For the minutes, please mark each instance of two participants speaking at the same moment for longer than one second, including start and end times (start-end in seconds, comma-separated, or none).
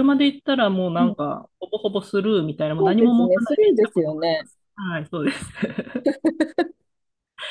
2.8-4.5